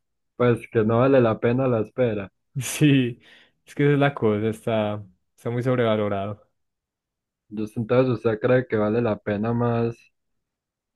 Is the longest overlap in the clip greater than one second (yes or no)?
no